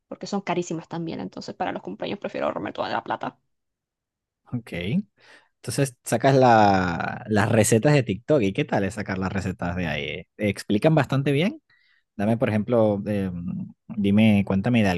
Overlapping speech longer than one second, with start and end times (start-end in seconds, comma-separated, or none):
none